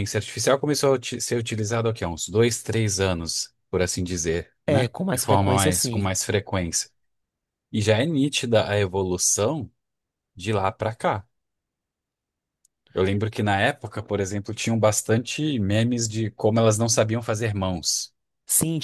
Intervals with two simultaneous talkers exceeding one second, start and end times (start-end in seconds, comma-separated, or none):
4.7-6.1